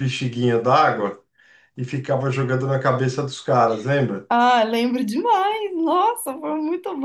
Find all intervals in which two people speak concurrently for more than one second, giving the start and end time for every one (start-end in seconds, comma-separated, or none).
none